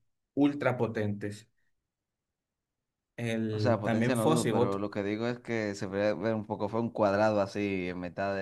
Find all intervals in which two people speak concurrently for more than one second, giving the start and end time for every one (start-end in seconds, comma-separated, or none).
3.5-4.8